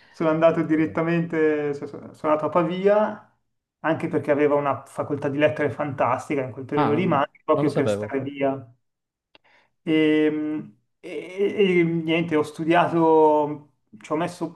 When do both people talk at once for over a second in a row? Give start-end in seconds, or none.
6.8-8.2